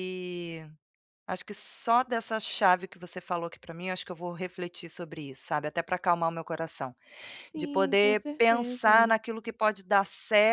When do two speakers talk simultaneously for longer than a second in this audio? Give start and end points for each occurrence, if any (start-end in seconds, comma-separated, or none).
7.5-9.1